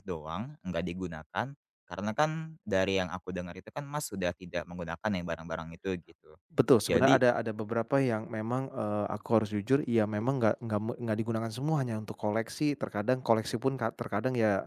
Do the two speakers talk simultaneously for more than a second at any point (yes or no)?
no